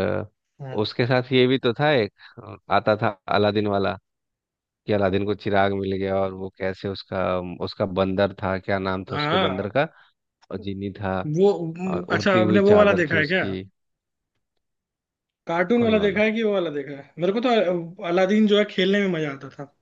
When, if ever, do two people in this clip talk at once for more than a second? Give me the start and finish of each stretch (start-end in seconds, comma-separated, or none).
11.8-13.4